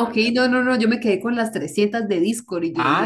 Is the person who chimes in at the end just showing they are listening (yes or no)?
no